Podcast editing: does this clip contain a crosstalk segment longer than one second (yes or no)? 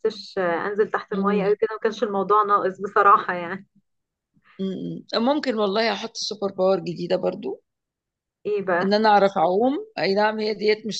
no